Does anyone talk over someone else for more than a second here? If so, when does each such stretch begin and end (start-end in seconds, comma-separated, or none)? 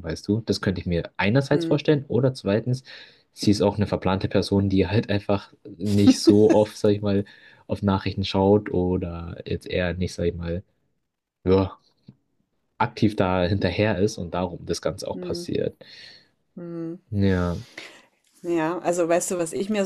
none